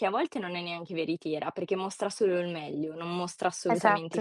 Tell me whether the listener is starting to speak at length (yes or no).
no